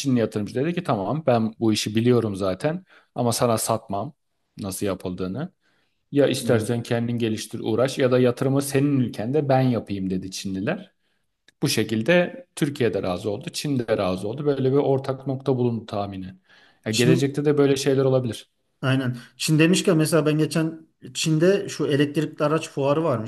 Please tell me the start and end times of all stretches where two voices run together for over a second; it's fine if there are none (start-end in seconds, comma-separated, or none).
none